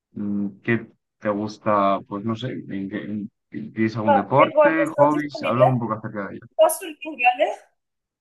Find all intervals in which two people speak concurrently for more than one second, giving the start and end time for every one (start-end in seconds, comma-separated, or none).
4.4-5.6